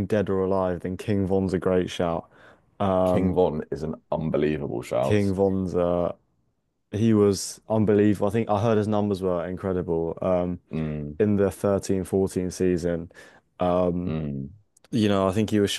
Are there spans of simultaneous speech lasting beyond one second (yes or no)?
no